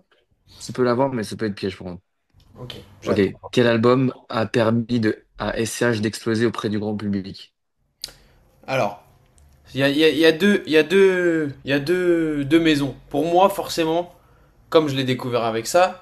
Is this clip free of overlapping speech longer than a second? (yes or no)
yes